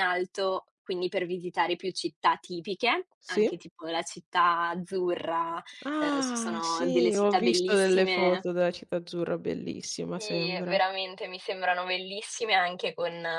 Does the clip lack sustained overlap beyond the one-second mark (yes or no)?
no